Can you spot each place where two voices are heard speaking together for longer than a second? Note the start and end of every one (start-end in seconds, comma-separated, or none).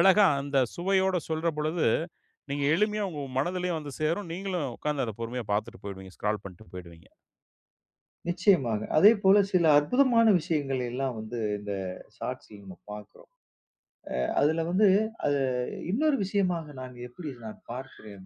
none